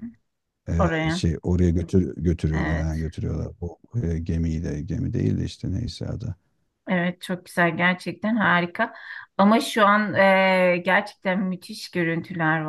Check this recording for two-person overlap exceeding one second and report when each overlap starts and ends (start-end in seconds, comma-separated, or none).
none